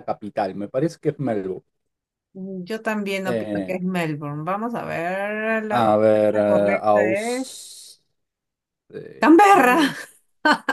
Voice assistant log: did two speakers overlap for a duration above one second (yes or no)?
yes